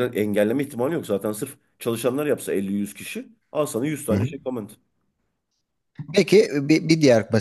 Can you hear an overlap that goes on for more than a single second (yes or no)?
no